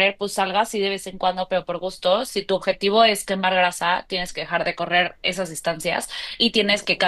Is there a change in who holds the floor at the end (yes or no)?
no